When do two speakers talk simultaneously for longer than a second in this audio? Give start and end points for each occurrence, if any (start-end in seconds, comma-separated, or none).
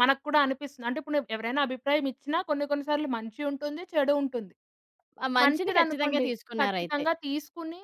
5.4-7.0